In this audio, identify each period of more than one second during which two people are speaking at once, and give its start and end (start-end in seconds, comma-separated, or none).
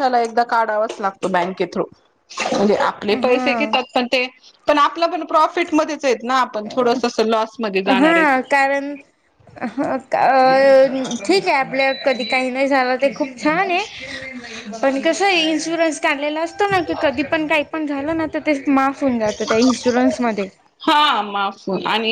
none